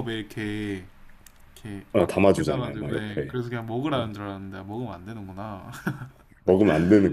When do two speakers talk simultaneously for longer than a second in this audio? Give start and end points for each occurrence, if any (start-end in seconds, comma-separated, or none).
1.9-3.4